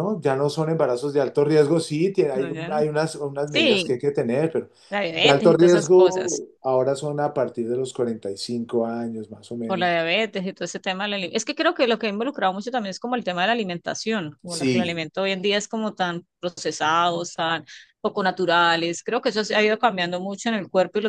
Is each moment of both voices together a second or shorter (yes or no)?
no